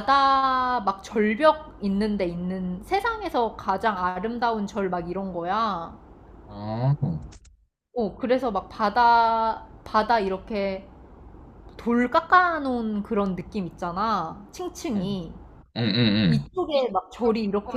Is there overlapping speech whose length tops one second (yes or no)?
no